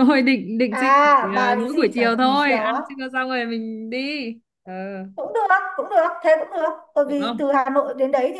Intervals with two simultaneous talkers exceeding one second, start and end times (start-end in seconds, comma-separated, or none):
0.7-2.8